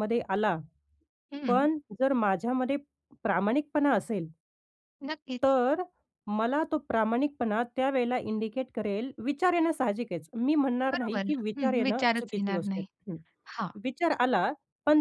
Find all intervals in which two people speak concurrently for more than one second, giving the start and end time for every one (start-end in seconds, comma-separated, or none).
10.9-12.9